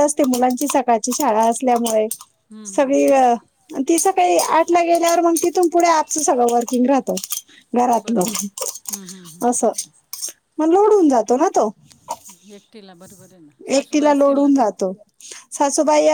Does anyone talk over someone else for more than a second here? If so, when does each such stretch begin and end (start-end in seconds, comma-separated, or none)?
none